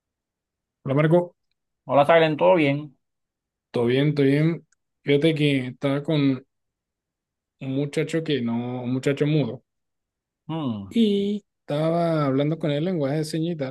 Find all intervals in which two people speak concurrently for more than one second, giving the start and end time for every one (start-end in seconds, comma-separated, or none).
none